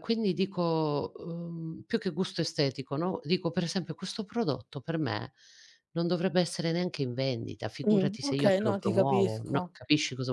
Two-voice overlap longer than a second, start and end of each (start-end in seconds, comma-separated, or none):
7.9-9.6